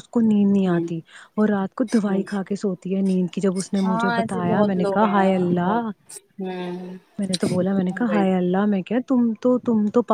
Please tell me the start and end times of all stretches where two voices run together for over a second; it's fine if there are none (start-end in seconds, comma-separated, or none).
3.8-5.8